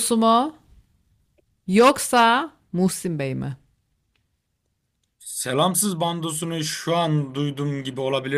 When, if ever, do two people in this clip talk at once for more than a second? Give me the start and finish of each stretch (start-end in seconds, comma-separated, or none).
none